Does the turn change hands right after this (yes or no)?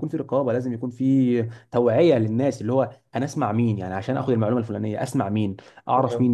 no